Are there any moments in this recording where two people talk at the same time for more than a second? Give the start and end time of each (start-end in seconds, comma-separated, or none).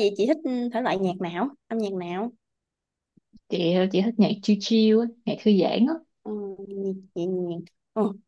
none